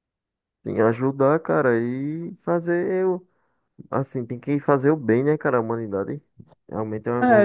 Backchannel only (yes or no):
no